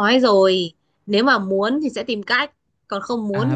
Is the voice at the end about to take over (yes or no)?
yes